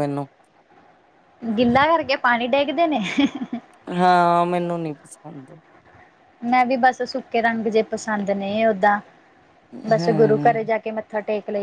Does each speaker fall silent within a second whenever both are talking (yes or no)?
yes